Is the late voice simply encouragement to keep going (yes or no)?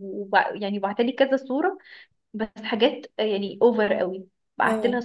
yes